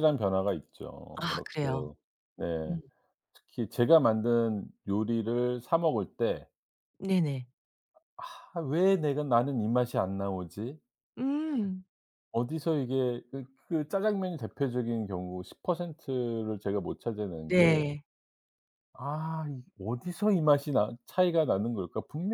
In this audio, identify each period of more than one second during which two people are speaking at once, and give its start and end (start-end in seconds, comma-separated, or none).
none